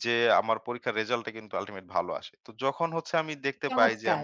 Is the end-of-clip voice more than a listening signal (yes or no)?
no